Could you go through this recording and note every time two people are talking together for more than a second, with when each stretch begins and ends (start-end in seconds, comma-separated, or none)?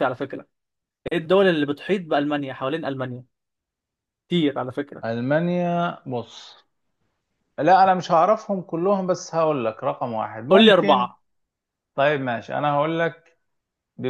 none